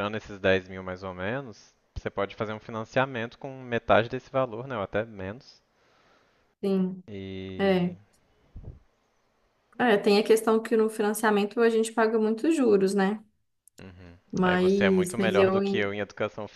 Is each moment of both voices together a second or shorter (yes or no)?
no